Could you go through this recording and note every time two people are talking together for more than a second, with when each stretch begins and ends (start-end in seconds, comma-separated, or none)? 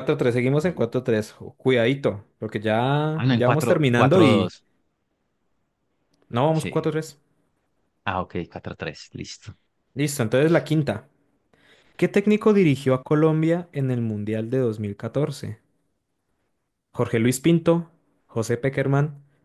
3.1-4.5